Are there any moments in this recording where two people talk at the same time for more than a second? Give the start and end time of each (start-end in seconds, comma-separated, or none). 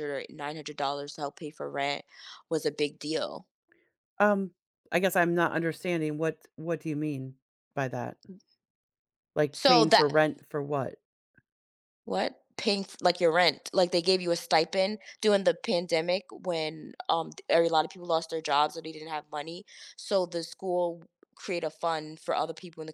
none